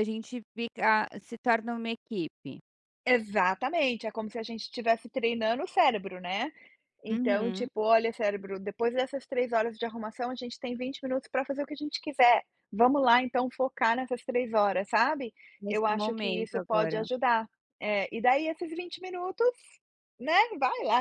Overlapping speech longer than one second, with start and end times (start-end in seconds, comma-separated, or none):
15.7-17.0